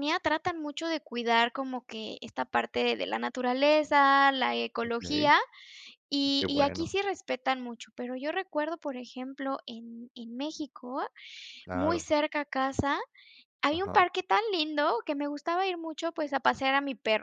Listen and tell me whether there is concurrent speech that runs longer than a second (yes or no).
no